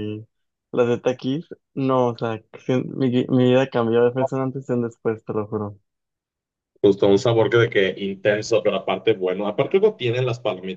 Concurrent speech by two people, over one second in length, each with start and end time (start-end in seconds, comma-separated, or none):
none